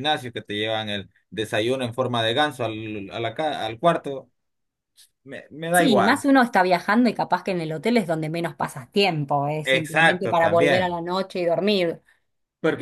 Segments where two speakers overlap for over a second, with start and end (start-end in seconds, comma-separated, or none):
9.7-11.0